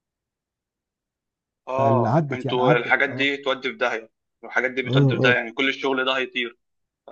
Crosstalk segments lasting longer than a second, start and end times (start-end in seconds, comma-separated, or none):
1.8-3.3